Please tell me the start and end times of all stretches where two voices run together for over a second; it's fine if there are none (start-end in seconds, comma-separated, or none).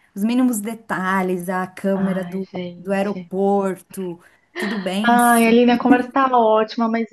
1.9-3.3